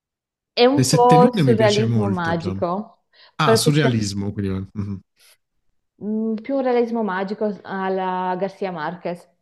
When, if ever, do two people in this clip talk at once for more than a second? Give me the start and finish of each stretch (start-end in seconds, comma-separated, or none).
0.8-2.6